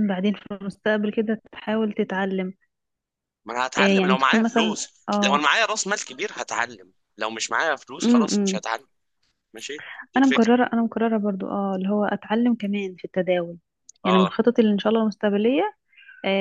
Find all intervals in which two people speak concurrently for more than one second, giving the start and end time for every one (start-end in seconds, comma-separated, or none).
3.8-5.4